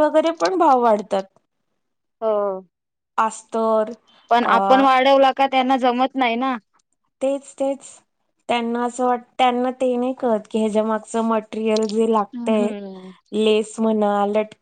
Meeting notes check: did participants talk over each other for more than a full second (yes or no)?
no